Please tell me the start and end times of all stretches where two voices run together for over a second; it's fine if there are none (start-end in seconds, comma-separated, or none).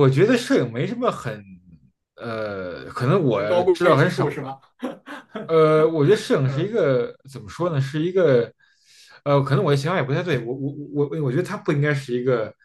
3.3-4.5